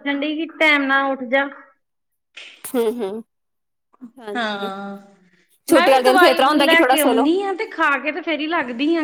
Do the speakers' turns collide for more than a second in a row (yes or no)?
yes